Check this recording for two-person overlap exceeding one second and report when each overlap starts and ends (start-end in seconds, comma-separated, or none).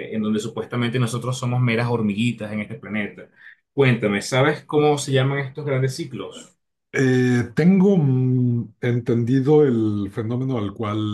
none